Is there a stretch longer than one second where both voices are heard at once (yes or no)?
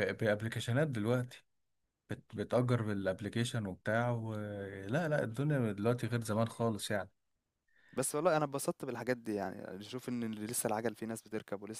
no